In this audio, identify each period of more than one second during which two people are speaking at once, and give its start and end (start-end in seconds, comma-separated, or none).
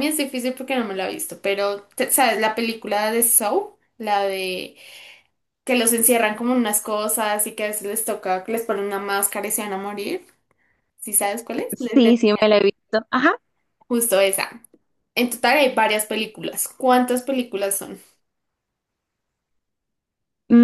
none